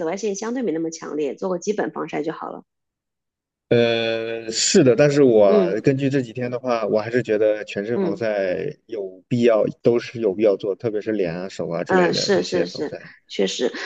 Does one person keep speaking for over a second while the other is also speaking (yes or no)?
yes